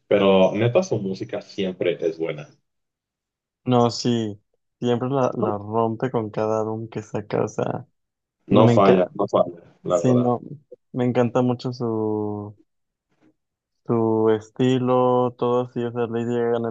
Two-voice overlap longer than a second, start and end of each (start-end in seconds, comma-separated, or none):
none